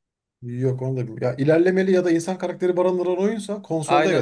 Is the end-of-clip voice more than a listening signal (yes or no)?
yes